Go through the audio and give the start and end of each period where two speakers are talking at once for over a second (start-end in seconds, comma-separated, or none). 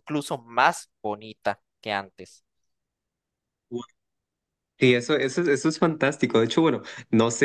none